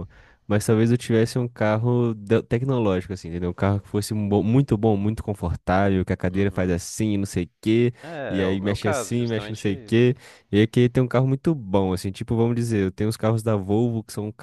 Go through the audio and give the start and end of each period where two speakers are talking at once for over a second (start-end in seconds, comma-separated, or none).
8.3-10.1